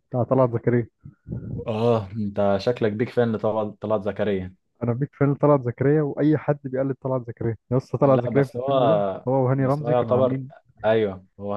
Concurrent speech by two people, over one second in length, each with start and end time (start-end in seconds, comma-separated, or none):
8.1-10.4